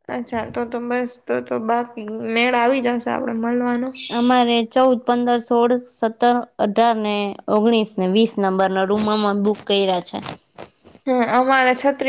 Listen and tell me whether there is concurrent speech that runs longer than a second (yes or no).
no